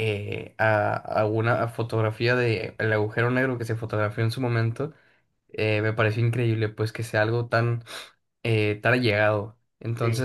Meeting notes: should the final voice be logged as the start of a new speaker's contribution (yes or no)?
no